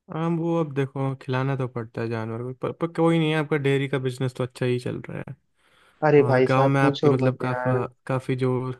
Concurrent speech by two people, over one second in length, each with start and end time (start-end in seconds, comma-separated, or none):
6.2-7.8